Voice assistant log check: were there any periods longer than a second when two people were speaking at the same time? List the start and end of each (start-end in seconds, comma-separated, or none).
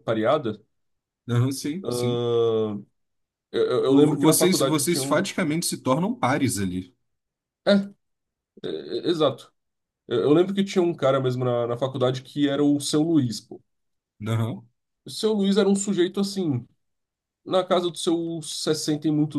3.9-5.3